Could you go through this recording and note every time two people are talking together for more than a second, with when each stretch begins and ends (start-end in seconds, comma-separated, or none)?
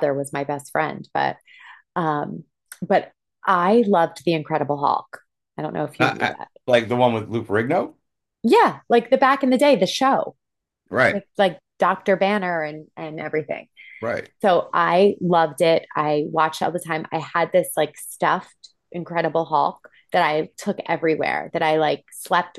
none